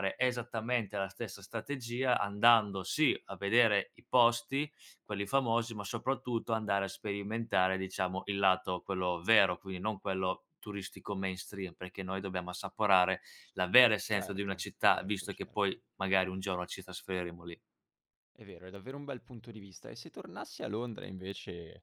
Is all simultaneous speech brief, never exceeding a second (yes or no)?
no